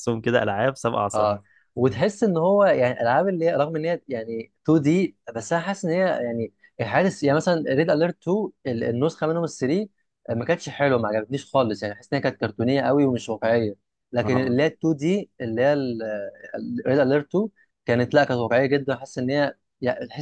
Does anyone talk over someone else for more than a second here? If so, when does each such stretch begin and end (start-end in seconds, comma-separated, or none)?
none